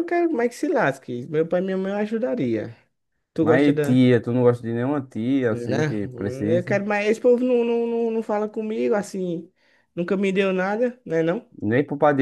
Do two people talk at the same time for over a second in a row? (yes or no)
yes